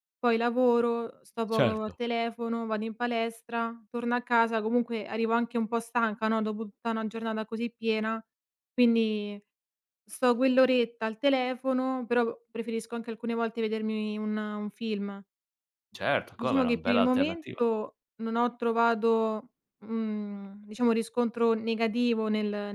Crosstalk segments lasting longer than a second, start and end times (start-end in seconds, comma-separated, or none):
16.4-17.6